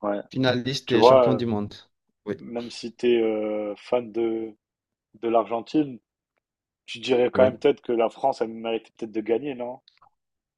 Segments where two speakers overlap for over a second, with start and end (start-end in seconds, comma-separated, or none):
none